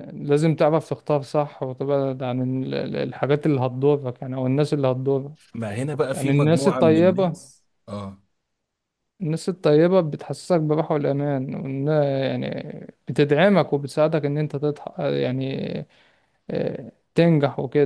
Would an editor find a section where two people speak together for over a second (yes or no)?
yes